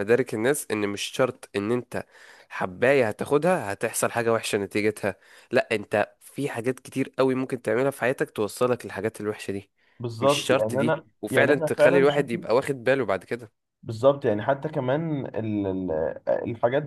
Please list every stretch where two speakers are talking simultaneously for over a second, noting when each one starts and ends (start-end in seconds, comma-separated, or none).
10.2-12.4